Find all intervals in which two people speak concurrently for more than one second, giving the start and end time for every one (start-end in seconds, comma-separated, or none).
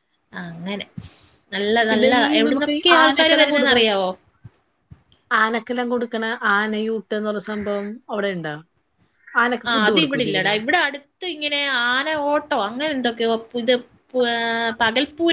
1.9-3.8